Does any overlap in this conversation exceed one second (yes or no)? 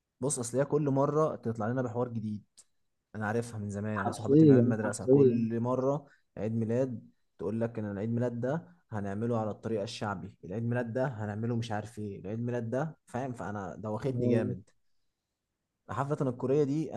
yes